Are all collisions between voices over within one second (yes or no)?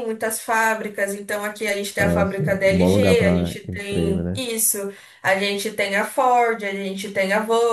no